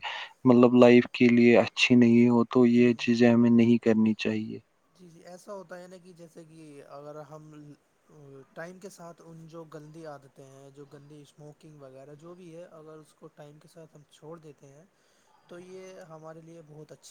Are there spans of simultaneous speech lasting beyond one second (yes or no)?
no